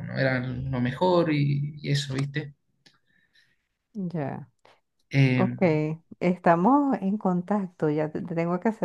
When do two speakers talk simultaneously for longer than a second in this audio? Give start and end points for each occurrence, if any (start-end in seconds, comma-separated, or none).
none